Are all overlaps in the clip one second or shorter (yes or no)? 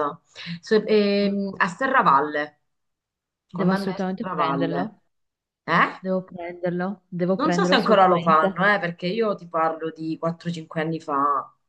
no